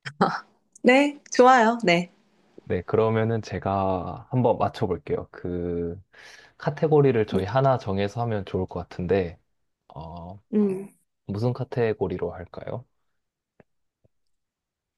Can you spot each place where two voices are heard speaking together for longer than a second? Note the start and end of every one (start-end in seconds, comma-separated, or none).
none